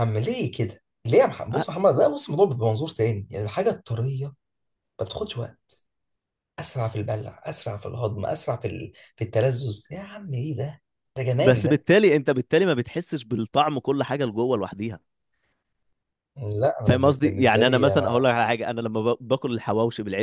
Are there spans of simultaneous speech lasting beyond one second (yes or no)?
yes